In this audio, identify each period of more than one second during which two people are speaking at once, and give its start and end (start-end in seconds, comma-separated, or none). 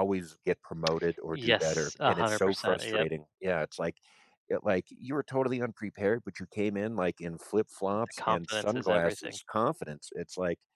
1.3-3.1, 8.1-9.4